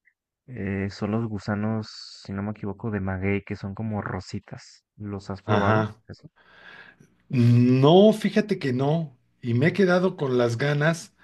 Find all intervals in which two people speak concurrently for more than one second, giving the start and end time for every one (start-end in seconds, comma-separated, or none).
none